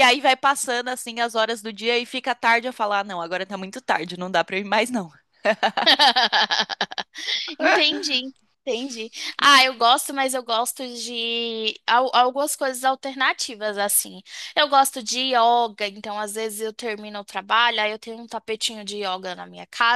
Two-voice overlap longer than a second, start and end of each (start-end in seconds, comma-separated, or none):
none